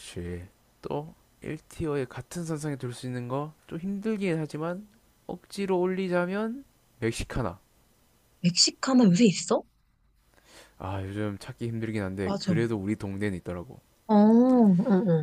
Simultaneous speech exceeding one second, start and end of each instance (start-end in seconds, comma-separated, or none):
none